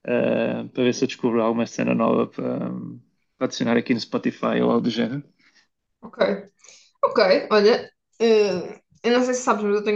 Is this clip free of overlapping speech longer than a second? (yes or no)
yes